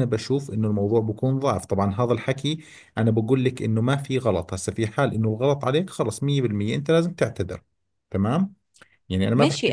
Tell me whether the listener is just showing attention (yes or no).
no